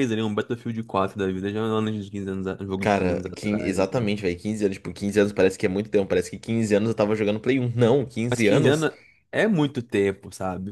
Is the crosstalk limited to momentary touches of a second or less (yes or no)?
no